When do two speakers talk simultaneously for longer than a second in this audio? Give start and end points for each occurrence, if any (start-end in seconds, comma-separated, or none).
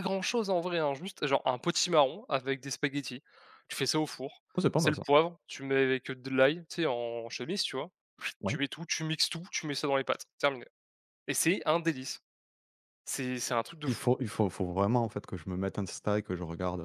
none